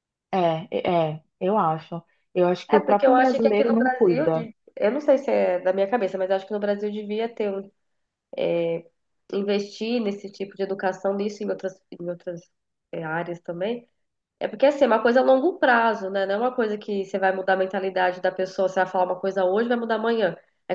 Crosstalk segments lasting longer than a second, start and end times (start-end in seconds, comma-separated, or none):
2.7-4.5